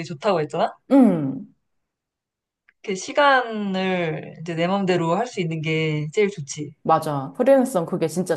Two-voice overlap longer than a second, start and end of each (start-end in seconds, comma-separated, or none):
none